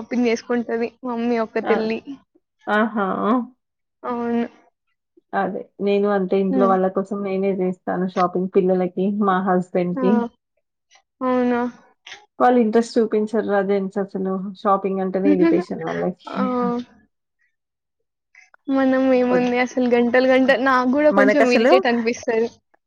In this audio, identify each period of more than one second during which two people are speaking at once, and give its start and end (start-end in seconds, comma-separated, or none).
none